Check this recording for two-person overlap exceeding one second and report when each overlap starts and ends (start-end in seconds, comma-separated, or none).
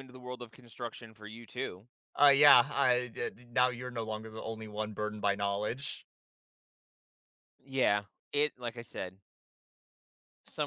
none